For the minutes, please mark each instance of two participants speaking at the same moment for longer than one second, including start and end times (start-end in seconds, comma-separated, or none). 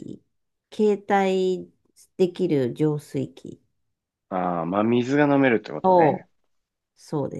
none